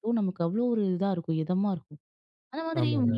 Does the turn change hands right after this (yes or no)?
no